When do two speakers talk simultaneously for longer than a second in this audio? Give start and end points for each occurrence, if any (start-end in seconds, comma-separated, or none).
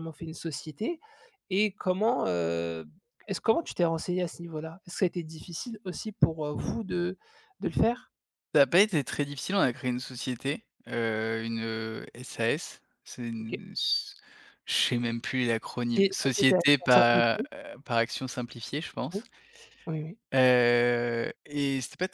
15.9-17.5